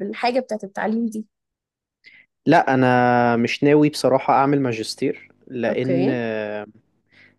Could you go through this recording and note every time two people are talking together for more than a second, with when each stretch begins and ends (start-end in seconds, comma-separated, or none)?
none